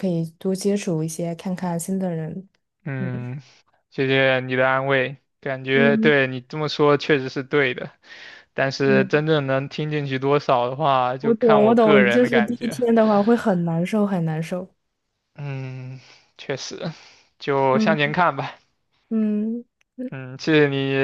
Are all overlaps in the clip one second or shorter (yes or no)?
no